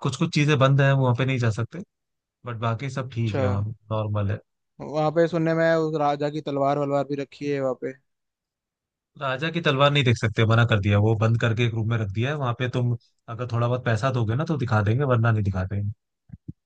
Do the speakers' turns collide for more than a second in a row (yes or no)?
no